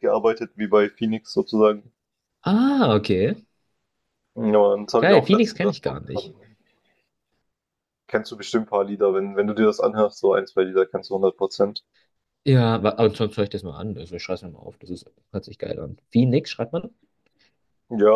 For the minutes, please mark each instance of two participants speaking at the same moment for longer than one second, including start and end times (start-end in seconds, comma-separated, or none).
5.0-6.3